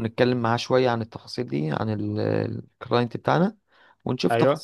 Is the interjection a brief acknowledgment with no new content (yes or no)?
yes